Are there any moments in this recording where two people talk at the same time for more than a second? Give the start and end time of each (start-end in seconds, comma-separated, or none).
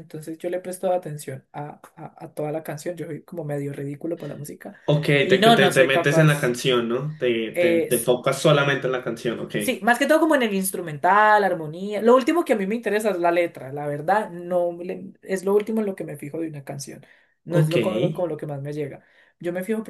5.2-6.6